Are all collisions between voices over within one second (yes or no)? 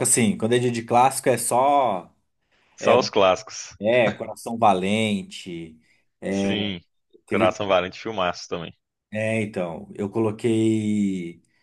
yes